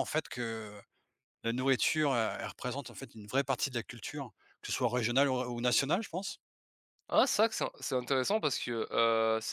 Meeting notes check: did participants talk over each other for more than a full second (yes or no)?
no